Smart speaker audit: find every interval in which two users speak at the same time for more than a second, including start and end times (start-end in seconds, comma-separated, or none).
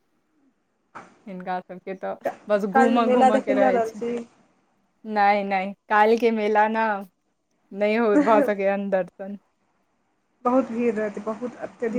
2.7-4.0